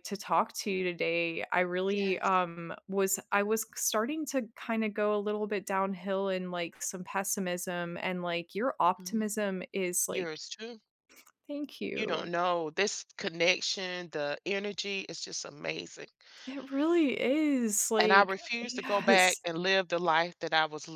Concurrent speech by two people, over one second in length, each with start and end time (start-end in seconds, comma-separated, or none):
18.0-19.4